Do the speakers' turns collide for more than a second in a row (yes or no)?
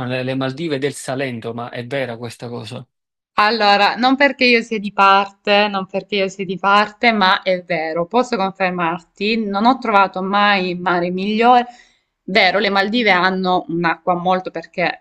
no